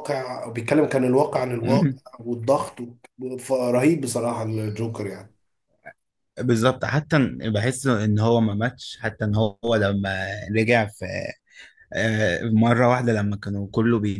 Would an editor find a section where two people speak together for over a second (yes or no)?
no